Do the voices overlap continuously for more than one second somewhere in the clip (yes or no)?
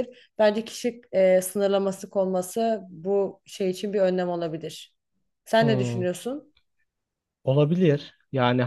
no